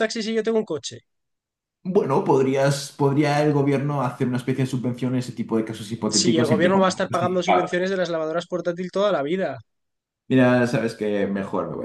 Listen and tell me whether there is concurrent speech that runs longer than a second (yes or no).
yes